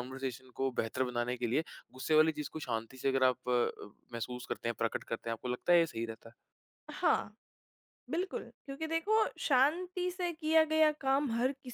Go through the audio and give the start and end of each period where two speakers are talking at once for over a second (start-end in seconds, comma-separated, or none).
none